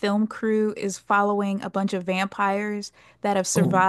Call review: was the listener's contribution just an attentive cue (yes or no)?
yes